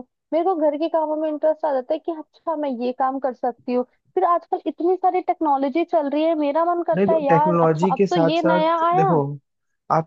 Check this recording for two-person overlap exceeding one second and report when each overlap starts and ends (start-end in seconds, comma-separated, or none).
7.0-9.1